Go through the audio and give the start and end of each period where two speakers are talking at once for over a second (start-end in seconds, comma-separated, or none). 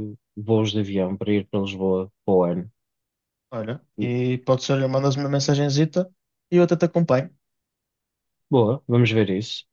none